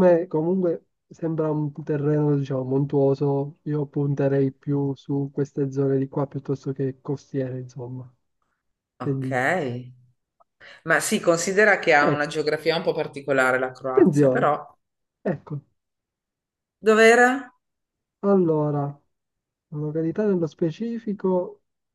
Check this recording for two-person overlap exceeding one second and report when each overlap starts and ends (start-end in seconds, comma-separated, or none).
none